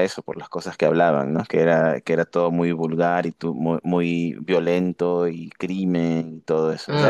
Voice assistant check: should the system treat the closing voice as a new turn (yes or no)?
yes